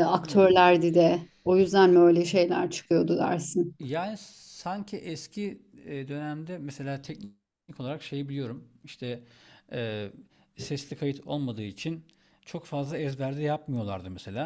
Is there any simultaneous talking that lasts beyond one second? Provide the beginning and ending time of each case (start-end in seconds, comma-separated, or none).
none